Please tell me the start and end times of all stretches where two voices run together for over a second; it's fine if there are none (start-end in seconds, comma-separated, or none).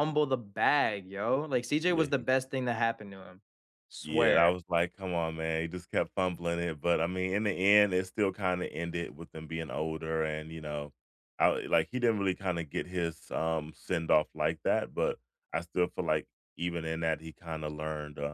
none